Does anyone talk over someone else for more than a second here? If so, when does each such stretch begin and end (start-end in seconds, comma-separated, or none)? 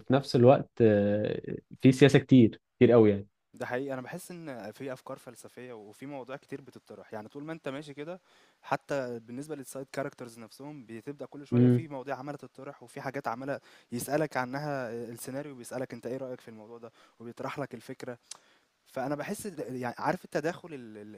none